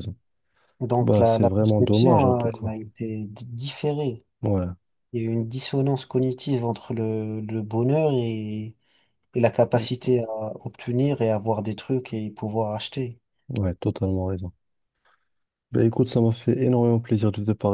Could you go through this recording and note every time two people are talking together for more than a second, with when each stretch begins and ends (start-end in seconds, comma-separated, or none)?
1.0-2.6